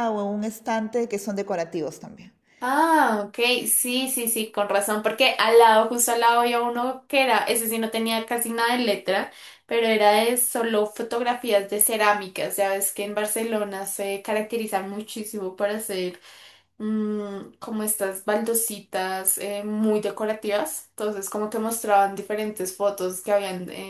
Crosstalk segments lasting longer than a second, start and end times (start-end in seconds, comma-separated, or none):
none